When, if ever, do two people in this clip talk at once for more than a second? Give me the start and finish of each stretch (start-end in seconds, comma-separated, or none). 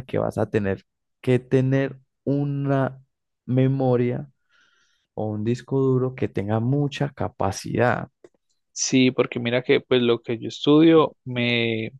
none